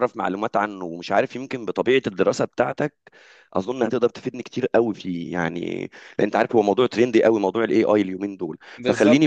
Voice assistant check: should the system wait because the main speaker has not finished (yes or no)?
yes